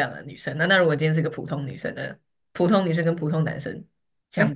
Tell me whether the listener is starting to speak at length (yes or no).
yes